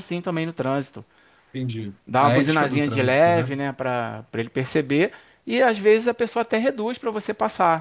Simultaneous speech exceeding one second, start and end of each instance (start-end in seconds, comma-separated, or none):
2.1-3.5